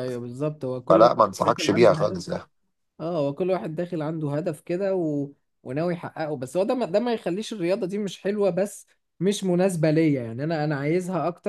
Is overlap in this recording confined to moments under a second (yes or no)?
no